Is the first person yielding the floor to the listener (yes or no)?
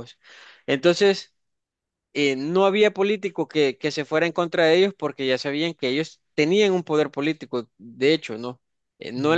no